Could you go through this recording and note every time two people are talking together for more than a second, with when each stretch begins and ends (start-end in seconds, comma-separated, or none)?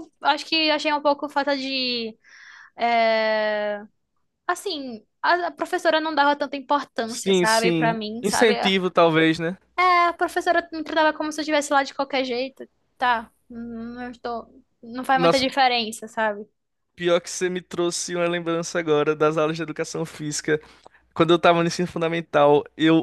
7.1-8.5